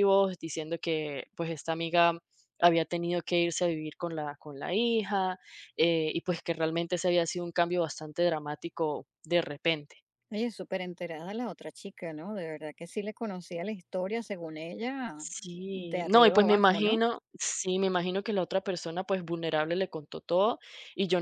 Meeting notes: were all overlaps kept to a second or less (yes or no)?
no